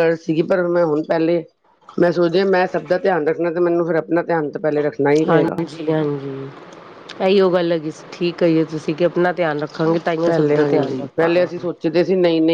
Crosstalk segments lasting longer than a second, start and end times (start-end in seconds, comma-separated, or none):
none